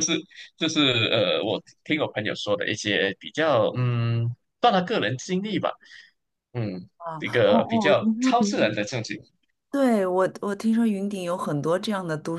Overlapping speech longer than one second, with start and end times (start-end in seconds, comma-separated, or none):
7.0-8.8